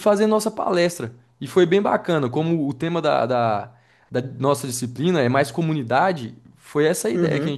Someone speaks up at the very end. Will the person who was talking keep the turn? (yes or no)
yes